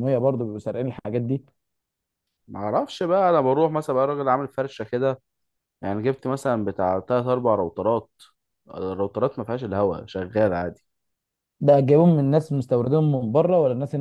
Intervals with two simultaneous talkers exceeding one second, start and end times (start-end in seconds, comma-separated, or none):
none